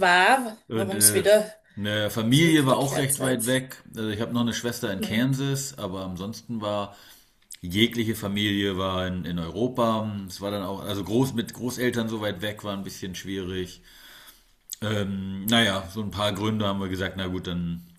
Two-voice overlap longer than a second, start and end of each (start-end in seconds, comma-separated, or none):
2.3-3.6